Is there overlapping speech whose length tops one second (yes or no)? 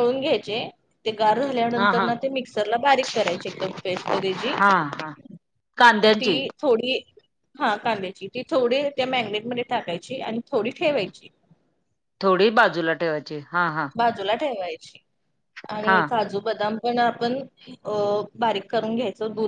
no